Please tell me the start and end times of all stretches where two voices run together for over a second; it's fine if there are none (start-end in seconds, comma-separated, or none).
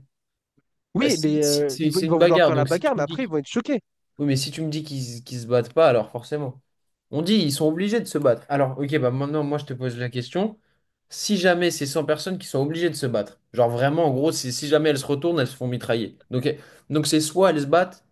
1.0-3.3